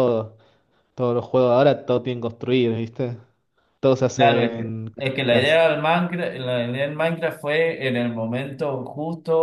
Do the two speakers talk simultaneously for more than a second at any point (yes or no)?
yes